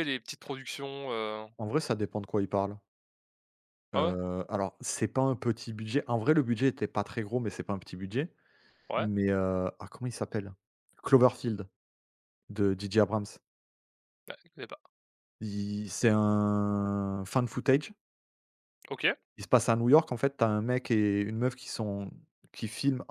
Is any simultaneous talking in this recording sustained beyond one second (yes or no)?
no